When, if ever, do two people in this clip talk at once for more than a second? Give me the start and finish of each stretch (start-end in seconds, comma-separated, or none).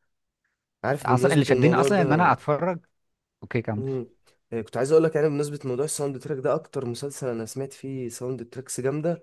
1.0-2.3